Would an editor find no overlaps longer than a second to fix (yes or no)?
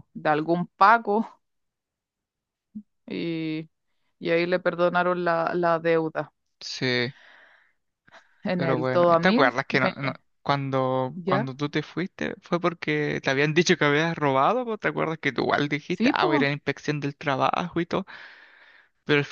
no